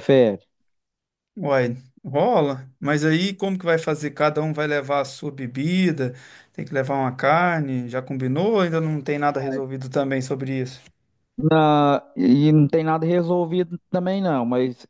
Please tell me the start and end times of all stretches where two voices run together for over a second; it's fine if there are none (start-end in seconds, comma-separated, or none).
none